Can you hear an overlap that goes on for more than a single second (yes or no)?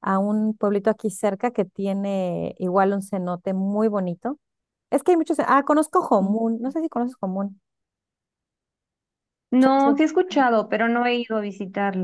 no